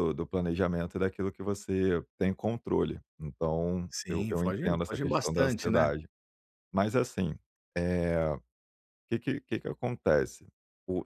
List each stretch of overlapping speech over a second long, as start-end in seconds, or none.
3.9-5.9